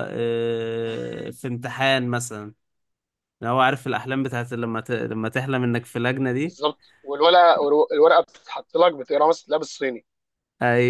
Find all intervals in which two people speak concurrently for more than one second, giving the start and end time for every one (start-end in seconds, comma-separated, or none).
none